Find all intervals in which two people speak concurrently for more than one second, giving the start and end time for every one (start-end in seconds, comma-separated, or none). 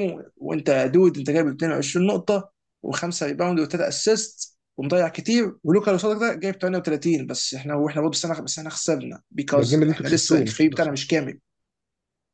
9.6-11.2